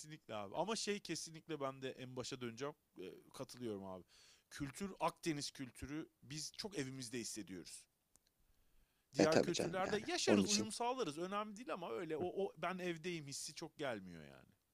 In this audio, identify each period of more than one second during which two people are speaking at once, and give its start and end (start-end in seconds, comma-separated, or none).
9.2-10.7